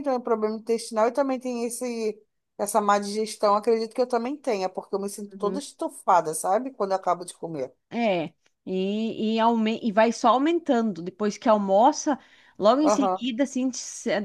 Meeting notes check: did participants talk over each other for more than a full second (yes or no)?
no